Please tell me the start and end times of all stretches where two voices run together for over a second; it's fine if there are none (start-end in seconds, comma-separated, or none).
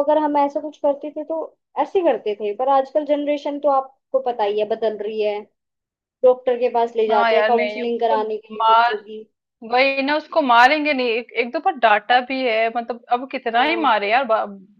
7.1-8.9